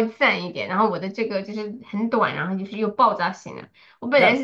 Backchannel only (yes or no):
yes